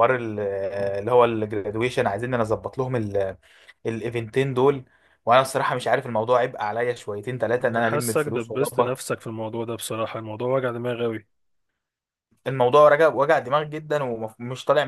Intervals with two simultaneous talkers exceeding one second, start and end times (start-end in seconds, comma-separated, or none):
7.6-9.0